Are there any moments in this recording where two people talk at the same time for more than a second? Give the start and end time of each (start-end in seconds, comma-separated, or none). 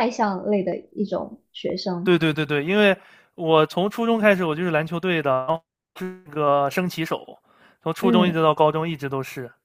none